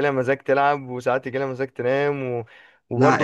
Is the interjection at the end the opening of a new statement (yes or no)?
yes